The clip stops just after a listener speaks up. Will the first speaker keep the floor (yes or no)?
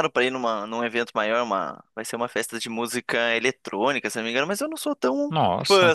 yes